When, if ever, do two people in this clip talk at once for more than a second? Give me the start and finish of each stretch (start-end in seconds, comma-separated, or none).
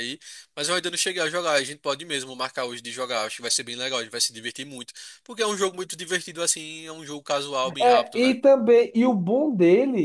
none